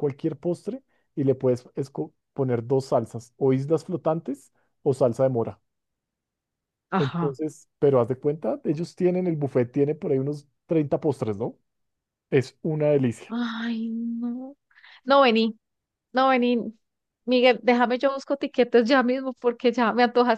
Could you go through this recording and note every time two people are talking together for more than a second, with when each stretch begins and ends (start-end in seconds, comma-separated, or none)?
none